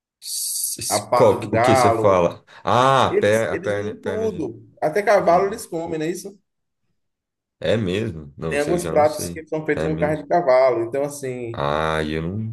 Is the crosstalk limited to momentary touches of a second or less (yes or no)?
no